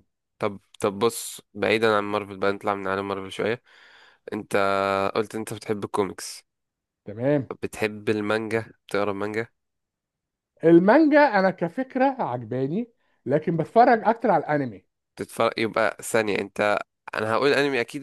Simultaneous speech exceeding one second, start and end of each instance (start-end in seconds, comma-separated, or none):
none